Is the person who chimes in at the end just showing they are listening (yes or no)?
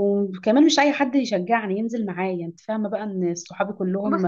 yes